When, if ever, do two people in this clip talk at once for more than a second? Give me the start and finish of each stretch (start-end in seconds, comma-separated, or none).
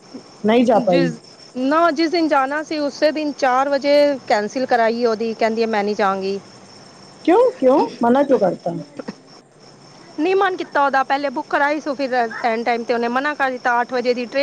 none